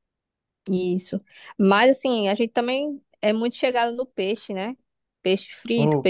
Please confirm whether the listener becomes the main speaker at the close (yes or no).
no